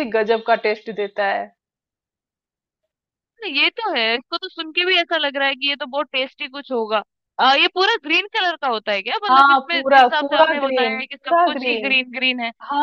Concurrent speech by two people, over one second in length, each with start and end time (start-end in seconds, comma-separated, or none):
9.3-12.0